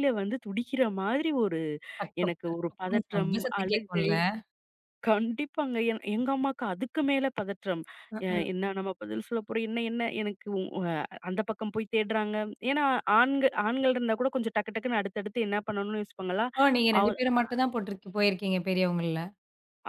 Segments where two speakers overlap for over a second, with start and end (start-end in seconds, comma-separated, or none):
2.2-4.1